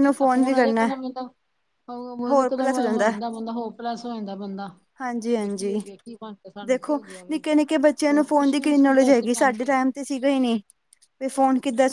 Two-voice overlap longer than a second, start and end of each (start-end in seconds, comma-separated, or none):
8.1-9.5